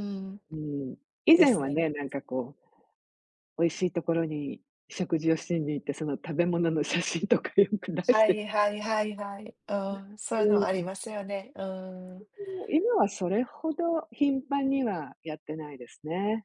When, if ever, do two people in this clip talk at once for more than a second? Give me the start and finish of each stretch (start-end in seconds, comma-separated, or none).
none